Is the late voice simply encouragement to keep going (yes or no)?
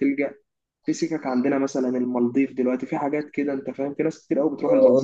no